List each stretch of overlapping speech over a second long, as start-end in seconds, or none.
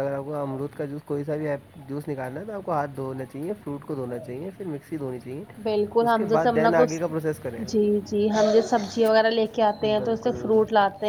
none